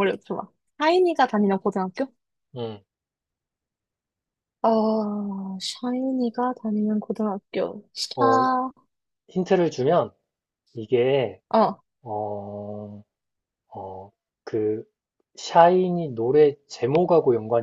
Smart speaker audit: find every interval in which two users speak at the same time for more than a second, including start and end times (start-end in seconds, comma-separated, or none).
none